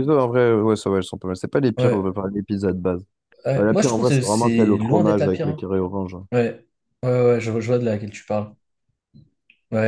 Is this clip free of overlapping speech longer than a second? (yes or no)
no